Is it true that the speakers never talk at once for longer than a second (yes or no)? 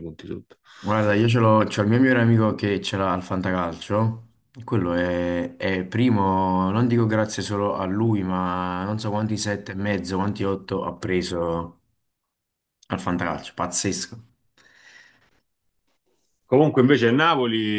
yes